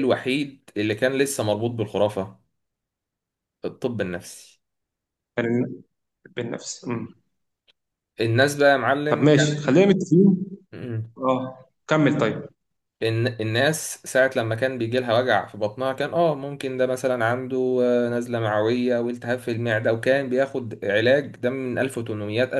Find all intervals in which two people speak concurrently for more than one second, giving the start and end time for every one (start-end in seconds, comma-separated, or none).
none